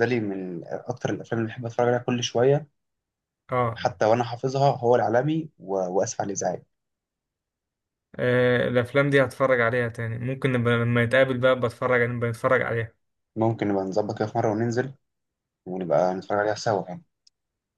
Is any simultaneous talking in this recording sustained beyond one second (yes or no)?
no